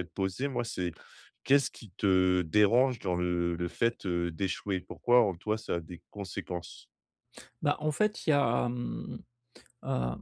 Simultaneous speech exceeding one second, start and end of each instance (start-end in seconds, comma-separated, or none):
none